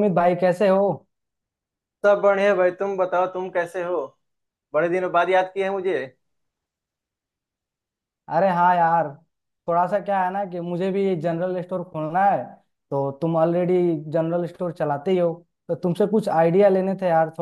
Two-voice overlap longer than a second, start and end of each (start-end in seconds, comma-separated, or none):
none